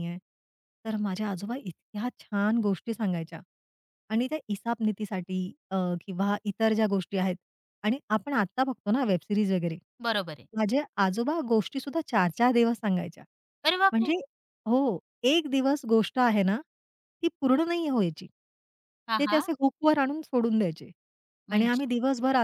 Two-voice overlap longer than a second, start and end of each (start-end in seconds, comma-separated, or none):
none